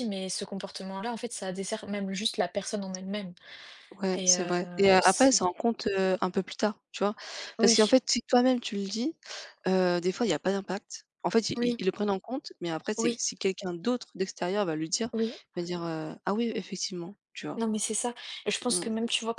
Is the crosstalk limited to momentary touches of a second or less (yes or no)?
no